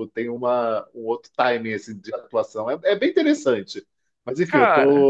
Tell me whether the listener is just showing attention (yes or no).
yes